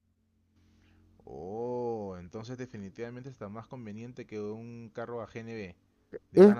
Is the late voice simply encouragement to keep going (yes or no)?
no